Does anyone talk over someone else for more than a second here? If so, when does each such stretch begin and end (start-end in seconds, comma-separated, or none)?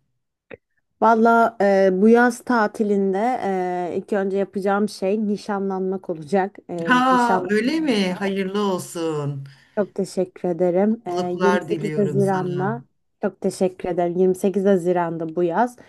6.9-8.3, 10.9-12.8